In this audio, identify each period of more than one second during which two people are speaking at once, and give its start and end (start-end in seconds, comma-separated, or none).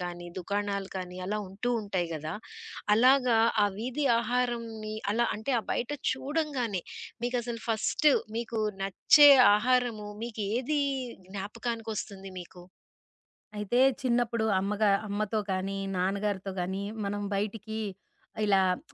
none